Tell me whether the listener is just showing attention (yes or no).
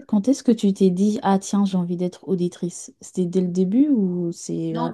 no